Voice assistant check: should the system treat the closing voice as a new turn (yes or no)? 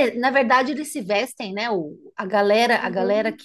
no